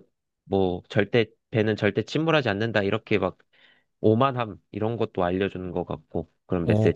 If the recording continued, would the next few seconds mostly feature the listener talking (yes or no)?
yes